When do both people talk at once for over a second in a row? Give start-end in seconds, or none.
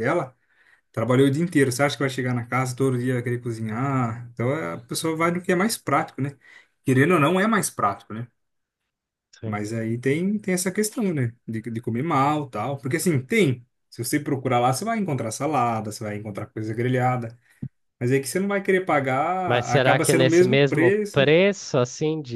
19.4-21.2